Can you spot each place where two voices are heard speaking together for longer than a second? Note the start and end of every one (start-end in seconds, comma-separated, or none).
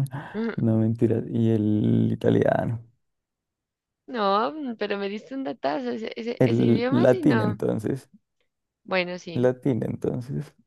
6.4-7.6